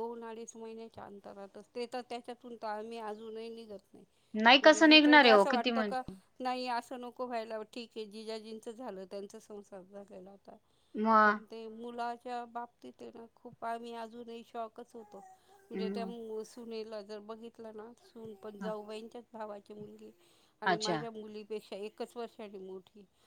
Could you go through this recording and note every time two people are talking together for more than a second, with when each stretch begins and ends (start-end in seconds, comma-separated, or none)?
4.6-6.0